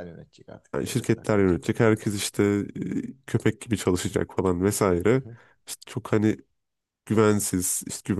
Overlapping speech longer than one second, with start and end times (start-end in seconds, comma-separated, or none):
0.7-2.1